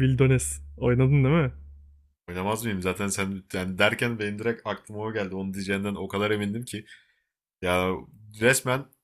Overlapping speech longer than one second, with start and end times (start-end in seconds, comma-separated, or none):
none